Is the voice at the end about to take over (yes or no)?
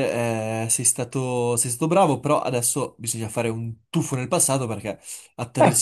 no